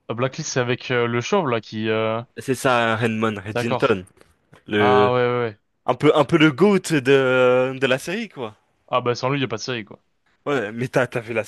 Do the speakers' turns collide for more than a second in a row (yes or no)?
no